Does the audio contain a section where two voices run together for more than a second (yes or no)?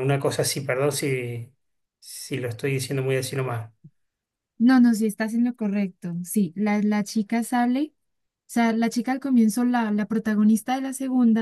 no